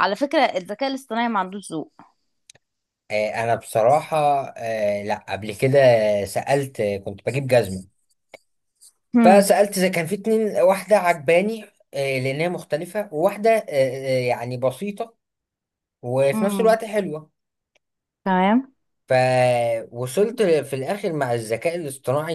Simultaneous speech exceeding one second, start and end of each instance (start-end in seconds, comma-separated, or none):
none